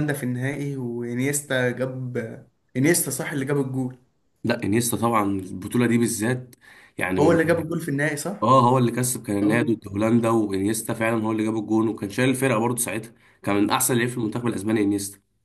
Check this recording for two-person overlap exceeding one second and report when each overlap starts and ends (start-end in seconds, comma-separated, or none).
none